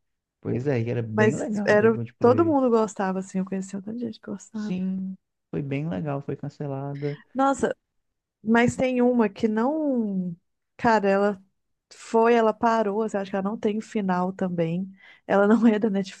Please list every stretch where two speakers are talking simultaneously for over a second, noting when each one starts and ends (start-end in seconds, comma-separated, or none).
1.1-2.7